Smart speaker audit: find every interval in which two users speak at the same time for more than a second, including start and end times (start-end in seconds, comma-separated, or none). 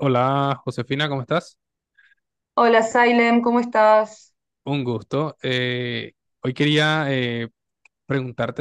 none